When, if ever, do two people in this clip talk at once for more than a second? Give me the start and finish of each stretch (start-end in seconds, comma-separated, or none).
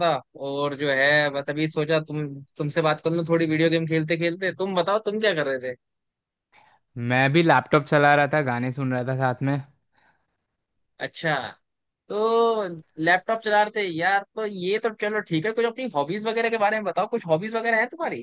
none